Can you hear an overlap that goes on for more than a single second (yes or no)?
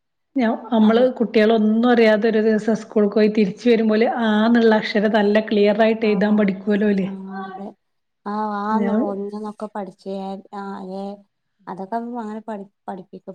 no